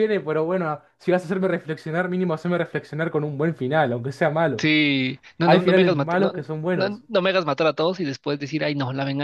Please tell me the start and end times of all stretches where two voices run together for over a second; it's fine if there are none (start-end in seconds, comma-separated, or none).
5.5-7.0